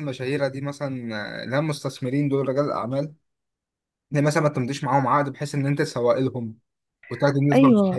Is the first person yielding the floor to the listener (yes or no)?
yes